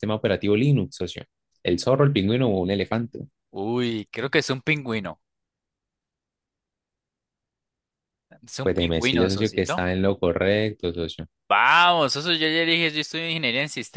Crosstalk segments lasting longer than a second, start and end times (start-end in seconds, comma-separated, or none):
8.6-9.8